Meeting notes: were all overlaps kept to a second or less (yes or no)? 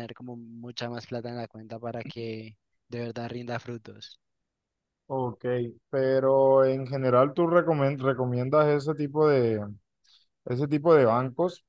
yes